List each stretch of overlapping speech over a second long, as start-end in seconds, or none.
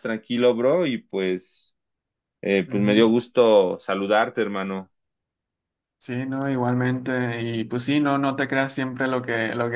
none